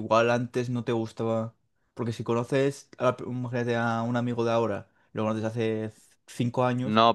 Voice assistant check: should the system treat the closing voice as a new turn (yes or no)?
yes